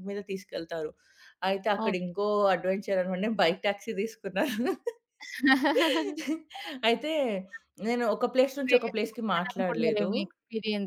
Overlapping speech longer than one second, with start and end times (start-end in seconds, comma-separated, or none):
8.7-10.1